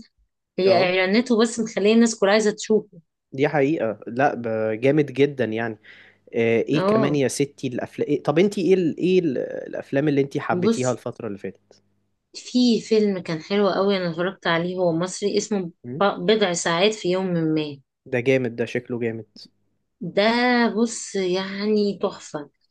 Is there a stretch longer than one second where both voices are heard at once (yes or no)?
no